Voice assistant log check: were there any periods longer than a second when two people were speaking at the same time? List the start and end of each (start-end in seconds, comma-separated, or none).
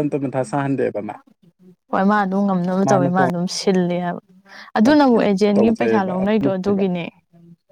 5.5-6.8